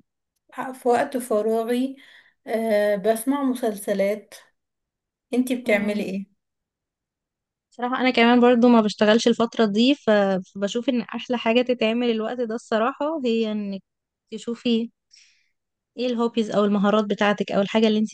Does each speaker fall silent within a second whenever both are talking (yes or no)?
yes